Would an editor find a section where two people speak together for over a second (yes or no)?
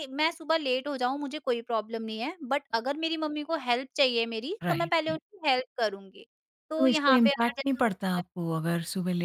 yes